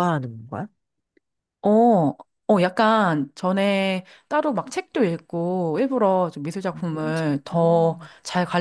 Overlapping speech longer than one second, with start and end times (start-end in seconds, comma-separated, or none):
6.7-8.1